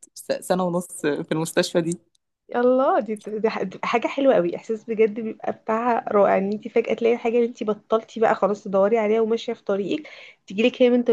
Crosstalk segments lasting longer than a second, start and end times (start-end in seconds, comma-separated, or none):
none